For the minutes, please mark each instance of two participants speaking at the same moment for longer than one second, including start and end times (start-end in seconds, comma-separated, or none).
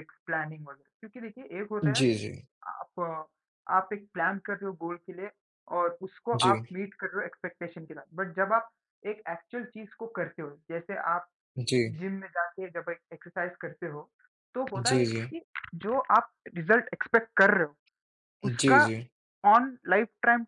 none